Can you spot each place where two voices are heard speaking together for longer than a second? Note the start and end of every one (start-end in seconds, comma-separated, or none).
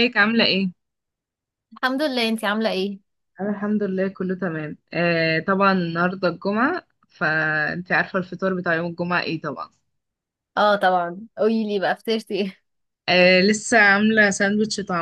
none